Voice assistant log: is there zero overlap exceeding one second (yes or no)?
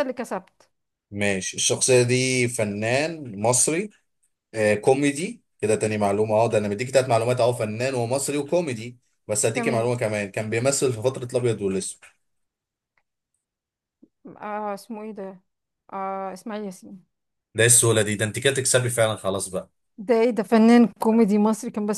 yes